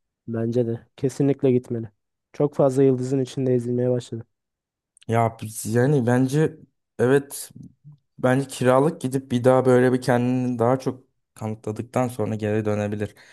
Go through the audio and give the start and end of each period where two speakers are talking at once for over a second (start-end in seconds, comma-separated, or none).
none